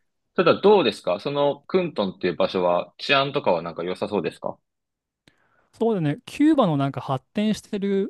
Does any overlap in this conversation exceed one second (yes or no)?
no